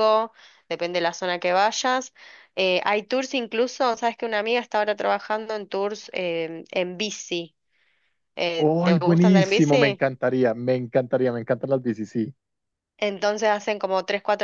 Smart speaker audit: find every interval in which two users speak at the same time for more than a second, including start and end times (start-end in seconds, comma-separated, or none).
8.6-10.0